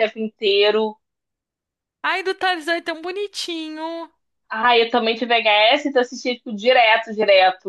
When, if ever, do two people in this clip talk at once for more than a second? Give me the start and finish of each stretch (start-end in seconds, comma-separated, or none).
none